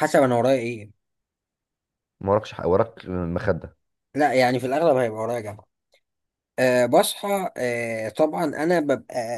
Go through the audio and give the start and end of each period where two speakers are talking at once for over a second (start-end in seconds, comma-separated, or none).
none